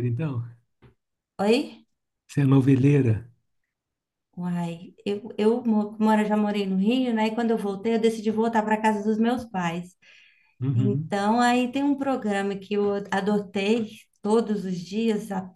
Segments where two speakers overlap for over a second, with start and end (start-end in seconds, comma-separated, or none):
none